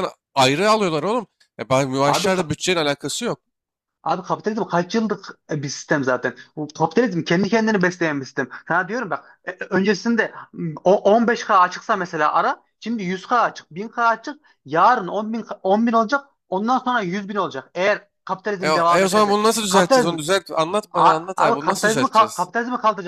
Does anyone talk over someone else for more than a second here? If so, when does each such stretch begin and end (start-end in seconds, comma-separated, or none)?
18.6-20.1, 20.9-22.5